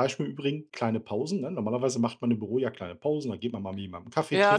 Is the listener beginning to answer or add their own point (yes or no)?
yes